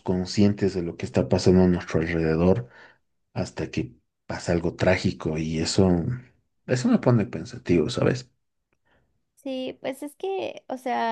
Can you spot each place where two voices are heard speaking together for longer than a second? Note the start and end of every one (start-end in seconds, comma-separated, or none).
none